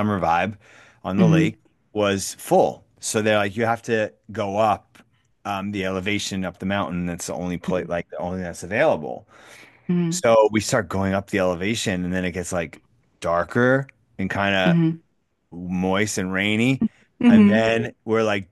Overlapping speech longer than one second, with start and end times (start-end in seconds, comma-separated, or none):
none